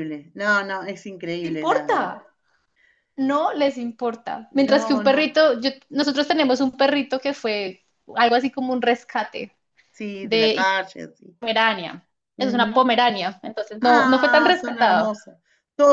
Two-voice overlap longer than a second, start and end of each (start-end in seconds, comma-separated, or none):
13.8-15.2